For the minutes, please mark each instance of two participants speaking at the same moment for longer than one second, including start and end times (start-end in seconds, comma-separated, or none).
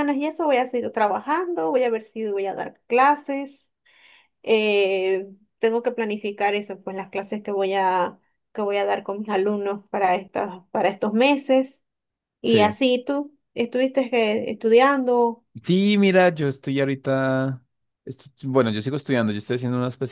none